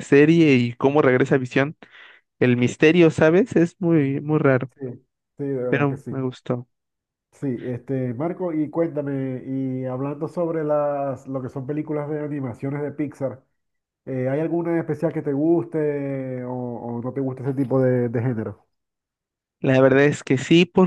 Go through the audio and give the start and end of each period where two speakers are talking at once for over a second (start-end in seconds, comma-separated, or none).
none